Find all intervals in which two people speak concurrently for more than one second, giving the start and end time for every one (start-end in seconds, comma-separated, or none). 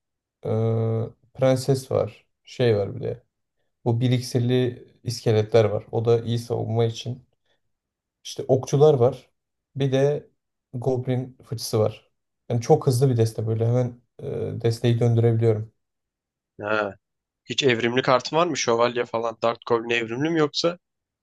none